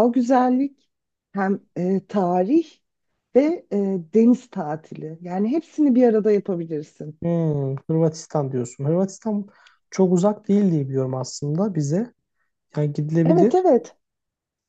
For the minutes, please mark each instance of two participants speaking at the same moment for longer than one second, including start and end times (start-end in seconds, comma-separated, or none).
none